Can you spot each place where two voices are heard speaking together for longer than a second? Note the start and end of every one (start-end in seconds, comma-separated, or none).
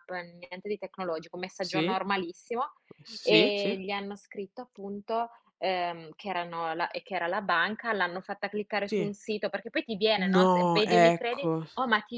10.3-11.7